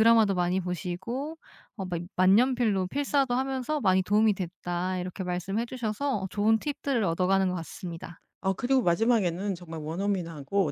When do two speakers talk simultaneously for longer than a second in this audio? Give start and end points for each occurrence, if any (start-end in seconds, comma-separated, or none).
none